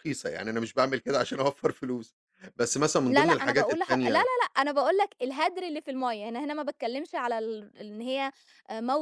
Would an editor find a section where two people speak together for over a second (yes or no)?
yes